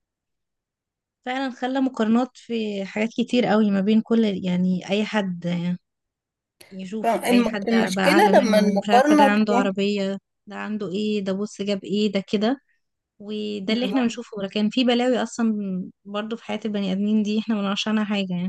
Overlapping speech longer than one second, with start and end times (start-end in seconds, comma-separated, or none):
7.0-9.8